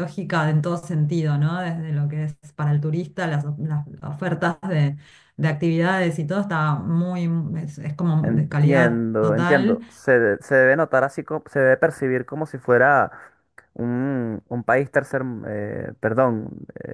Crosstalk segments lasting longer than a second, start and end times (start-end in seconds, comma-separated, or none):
8.2-9.8